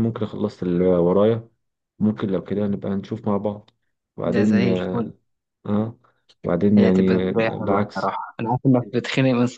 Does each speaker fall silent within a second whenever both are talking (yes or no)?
no